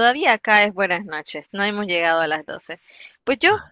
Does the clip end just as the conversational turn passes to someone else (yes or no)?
no